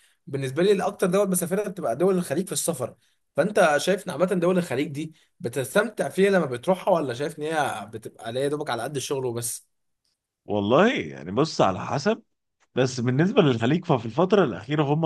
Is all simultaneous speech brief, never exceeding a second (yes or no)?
yes